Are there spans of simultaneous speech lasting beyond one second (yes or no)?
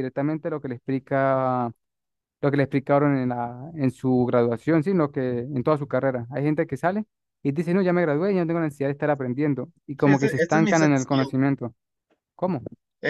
yes